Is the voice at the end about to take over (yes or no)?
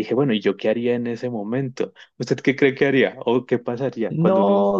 yes